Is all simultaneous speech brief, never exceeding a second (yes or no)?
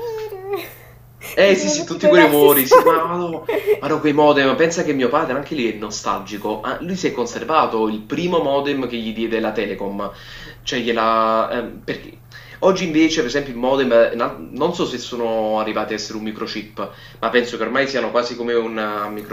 no